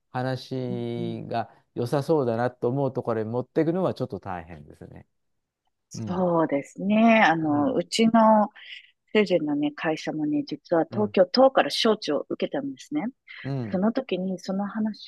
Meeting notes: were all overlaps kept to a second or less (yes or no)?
yes